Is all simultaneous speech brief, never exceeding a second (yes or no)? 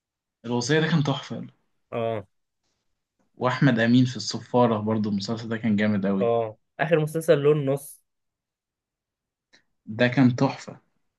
yes